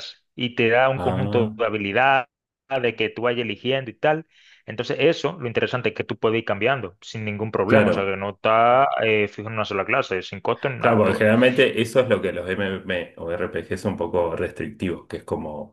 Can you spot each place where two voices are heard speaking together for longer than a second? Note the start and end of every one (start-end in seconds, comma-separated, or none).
none